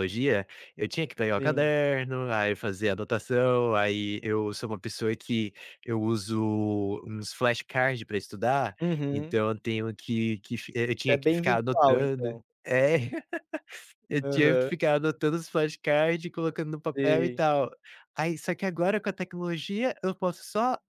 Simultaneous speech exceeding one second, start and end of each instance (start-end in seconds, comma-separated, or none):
11.1-12.4